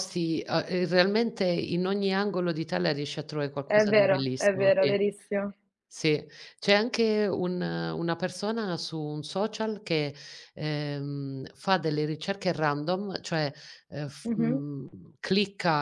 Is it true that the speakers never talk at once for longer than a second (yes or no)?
no